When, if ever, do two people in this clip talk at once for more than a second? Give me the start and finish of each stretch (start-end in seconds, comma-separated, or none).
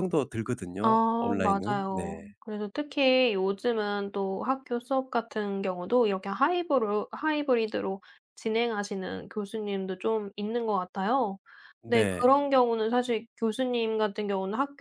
0.8-2.3